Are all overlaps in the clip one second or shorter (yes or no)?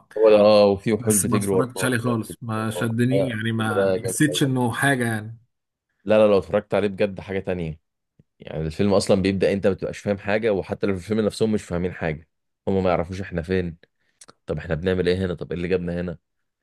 no